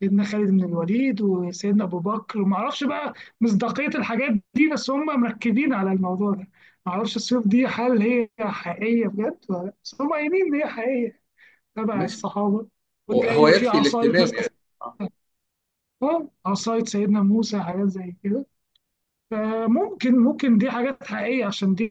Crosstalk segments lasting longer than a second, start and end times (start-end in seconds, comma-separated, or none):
13.1-14.4